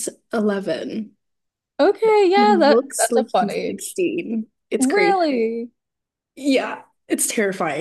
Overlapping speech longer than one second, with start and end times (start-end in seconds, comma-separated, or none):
2.3-4.0